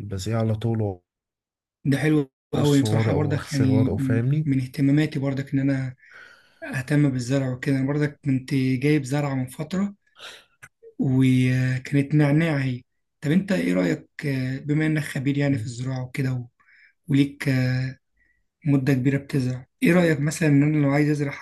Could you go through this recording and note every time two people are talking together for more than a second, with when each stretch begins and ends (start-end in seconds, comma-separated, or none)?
2.5-4.5